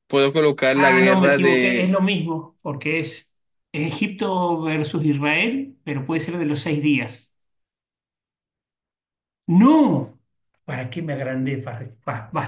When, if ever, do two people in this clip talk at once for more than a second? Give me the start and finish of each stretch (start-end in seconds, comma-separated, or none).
0.7-2.0